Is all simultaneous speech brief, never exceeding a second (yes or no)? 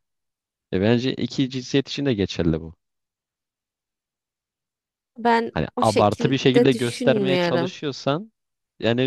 no